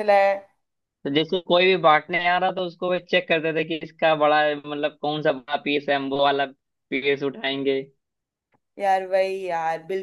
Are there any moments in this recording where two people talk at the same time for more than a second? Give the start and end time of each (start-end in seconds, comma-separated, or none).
none